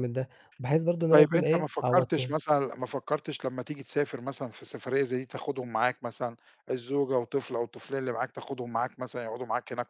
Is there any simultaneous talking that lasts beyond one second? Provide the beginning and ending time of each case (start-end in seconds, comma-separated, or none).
1.1-2.4